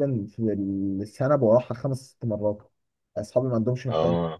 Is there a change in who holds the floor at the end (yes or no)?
no